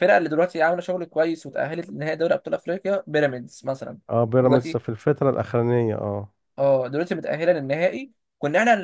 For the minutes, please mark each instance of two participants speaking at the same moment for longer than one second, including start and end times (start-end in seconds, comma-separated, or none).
none